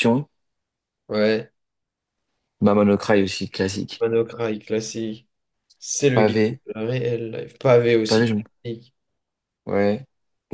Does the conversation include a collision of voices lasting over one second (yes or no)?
no